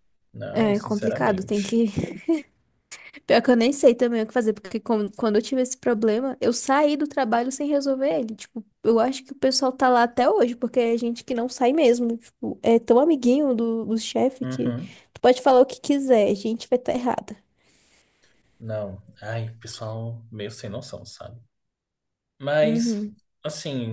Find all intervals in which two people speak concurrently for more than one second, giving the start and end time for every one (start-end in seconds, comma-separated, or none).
0.5-1.8